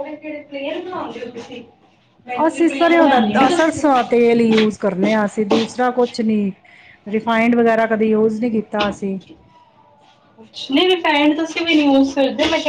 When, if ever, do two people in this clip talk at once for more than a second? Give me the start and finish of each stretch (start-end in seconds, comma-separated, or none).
2.5-3.8